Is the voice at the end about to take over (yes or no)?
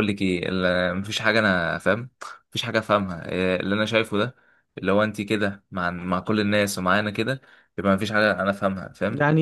yes